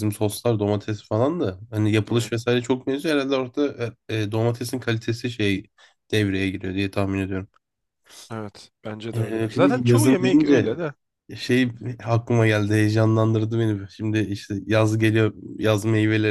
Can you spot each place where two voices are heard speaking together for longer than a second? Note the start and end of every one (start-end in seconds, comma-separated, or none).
9.1-10.7